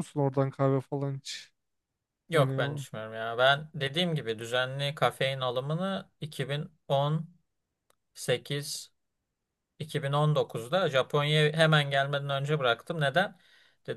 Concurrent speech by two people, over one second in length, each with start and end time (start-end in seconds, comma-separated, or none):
none